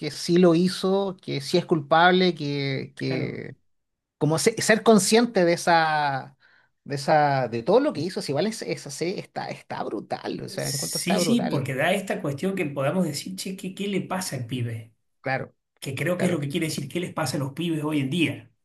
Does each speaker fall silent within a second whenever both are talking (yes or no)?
no